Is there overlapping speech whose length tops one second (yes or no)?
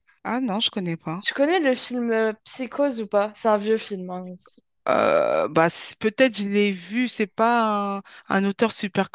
no